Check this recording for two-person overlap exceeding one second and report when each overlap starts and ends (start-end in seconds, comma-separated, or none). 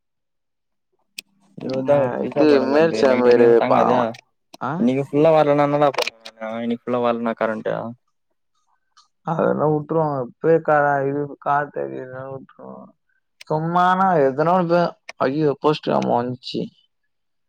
1.9-4.0